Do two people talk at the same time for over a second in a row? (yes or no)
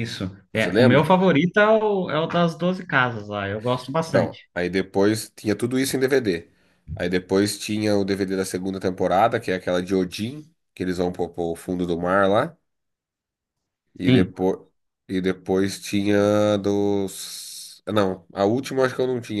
no